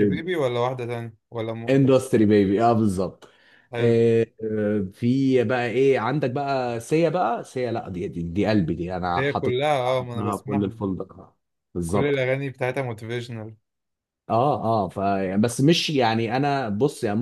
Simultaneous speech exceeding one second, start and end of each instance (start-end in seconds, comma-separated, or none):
9.2-10.8